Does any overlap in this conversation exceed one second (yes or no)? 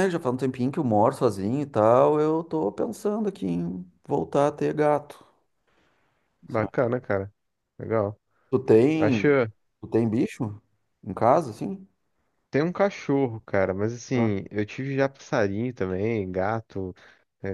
no